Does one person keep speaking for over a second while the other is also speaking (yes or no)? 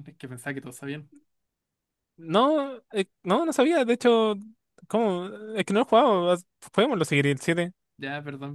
no